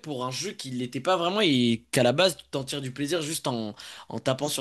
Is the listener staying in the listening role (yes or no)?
no